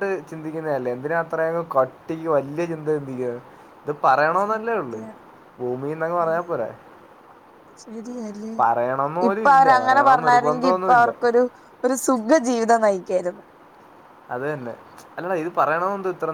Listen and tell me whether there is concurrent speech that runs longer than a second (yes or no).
yes